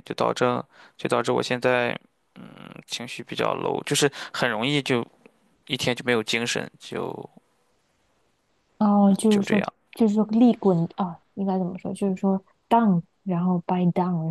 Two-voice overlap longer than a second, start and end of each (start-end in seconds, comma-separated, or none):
none